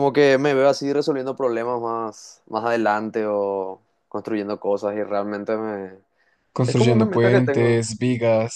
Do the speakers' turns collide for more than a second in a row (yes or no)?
yes